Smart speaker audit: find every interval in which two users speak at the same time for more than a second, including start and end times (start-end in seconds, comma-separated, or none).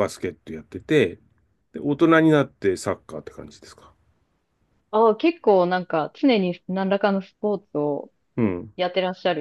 none